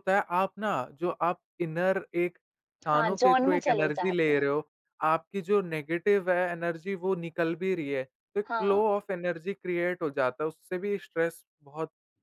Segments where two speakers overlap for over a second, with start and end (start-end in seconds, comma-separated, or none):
2.9-4.5